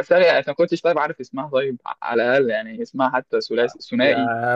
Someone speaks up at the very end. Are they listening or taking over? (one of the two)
taking over